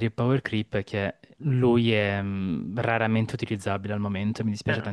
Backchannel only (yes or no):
no